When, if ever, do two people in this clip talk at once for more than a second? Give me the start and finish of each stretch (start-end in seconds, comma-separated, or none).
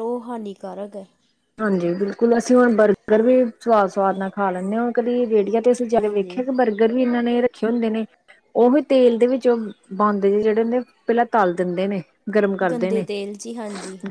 none